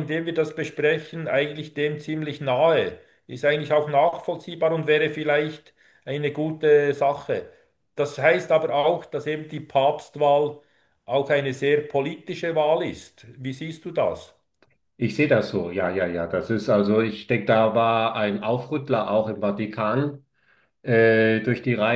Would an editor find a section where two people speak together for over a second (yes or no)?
no